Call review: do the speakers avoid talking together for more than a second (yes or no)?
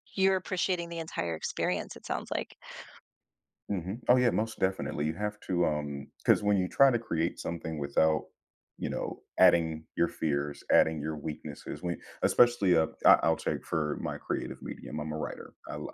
yes